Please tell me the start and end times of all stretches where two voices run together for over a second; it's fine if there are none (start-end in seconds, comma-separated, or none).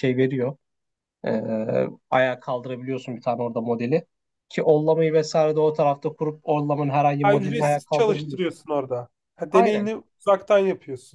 7.2-8.6